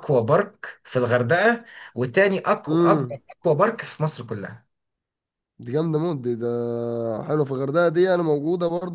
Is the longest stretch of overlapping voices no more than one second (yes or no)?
yes